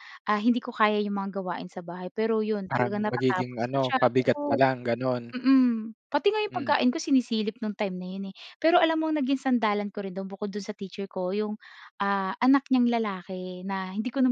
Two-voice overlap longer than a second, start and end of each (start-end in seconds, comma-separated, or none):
2.7-4.6